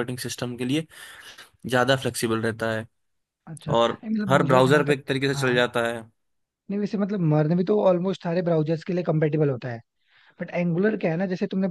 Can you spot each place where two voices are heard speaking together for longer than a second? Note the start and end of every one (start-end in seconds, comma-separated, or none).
3.8-5.6